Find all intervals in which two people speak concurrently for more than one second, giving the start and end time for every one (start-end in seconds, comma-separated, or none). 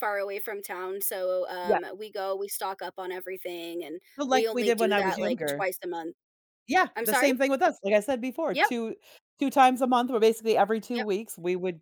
4.2-5.6